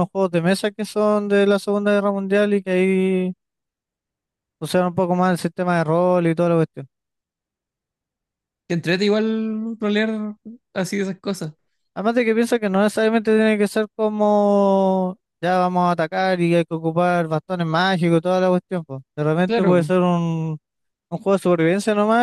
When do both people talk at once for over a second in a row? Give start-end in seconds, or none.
none